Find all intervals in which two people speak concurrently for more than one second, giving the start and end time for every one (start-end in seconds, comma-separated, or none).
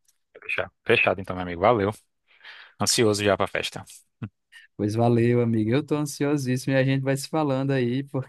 none